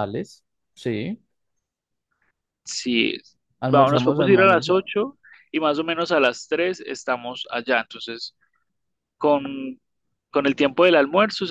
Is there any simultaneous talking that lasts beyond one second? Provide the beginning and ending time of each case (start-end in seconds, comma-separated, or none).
3.7-4.9